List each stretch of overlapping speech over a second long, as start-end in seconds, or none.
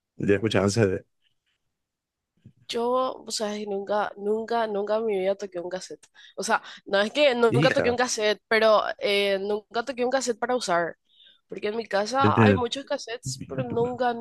none